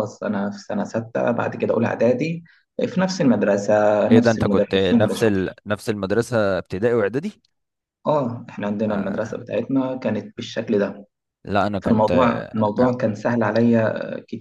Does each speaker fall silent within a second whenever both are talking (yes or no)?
no